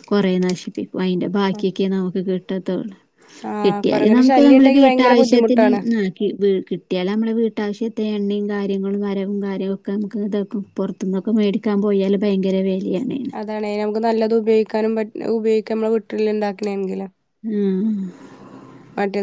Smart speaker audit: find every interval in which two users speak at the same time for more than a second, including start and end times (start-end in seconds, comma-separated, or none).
3.6-5.4